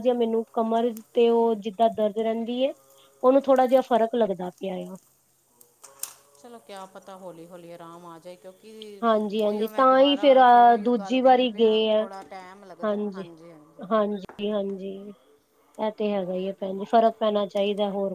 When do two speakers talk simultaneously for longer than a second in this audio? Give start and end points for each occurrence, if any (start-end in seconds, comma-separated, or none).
9.4-12.1